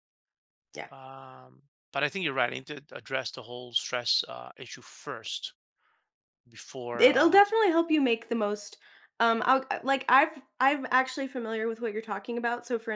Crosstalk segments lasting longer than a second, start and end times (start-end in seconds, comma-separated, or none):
none